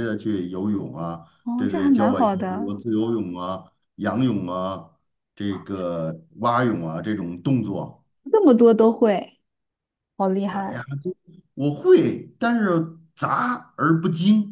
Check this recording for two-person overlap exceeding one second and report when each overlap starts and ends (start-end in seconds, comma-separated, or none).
1.4-2.8